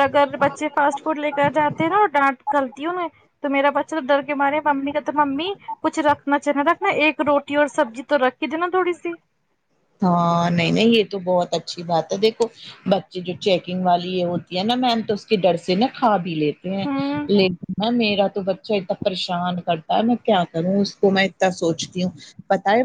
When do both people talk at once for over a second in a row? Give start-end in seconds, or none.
none